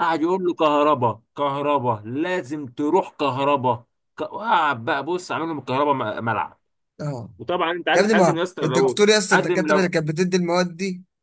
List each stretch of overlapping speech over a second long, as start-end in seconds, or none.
7.9-9.9